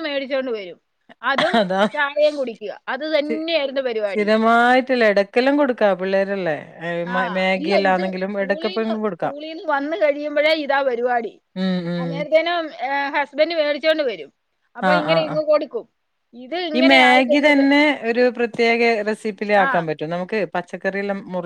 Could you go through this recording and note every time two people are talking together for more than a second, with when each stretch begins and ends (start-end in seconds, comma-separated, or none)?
7.4-9.3